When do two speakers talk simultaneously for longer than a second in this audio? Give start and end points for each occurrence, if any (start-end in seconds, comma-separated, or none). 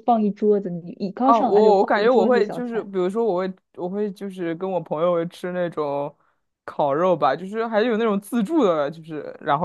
1.2-2.9